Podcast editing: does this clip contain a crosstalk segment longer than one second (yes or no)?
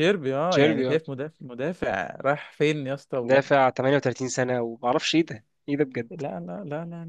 no